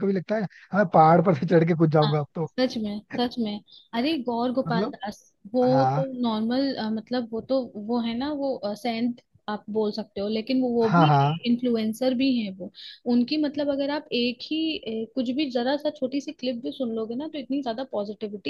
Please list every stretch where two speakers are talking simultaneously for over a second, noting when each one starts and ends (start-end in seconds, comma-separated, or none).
none